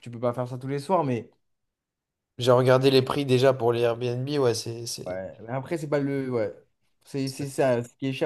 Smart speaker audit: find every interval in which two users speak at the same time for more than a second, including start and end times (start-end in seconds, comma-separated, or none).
none